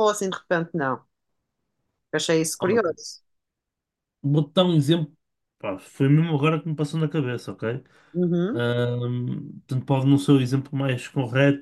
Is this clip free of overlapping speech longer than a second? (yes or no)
yes